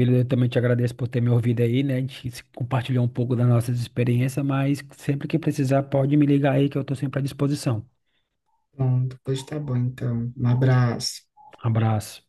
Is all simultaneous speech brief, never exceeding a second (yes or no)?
yes